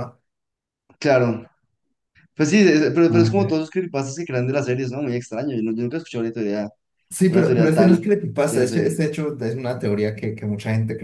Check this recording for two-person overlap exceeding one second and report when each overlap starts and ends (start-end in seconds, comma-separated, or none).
7.3-9.0